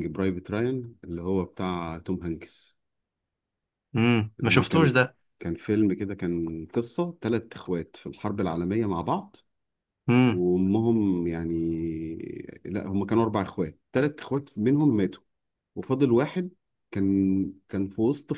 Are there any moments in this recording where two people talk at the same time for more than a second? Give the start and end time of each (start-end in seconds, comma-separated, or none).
none